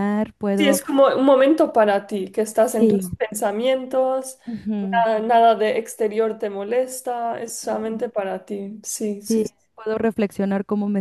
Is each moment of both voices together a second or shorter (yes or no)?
yes